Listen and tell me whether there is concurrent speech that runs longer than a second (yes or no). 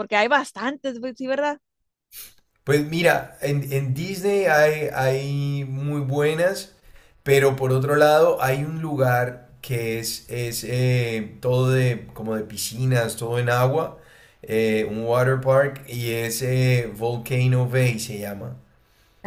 no